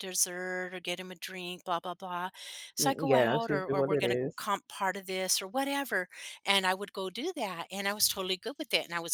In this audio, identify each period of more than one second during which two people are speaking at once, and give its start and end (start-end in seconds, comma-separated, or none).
2.8-4.4